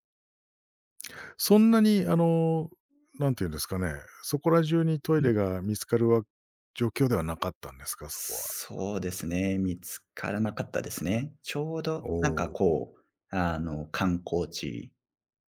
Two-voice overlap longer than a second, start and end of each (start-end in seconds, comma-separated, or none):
none